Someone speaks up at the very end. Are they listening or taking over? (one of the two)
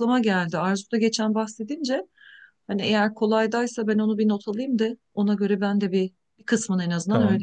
taking over